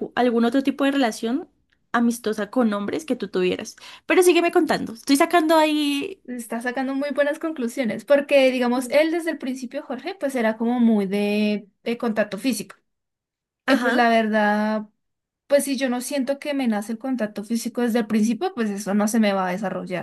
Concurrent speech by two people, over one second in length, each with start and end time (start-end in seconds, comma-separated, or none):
none